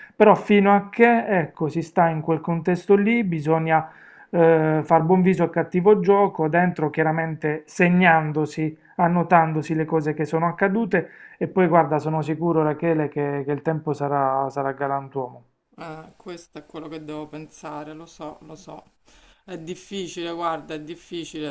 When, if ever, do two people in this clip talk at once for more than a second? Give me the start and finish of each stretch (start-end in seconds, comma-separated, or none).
none